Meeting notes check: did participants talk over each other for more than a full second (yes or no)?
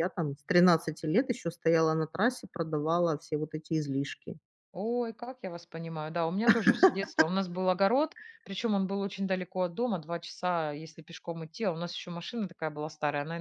no